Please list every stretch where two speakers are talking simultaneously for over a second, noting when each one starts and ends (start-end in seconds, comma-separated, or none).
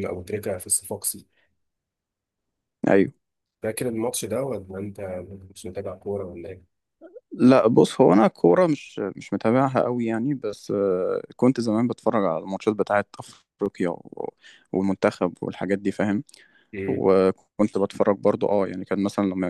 none